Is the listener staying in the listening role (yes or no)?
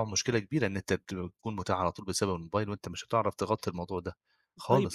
no